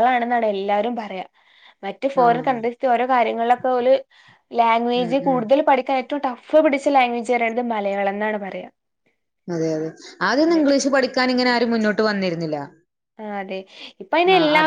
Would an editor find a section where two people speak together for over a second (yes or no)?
no